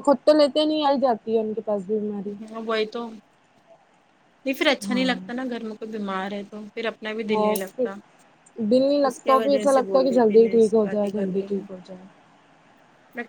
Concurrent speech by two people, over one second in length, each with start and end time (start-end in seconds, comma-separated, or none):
9.1-11.6